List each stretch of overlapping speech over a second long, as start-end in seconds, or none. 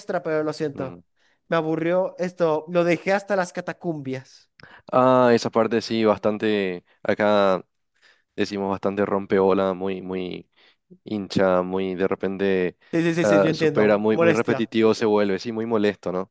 13.2-14.7